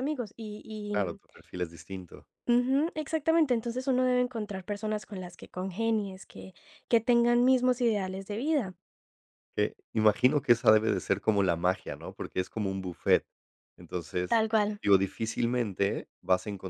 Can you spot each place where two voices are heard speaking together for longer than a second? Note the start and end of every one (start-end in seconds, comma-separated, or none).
none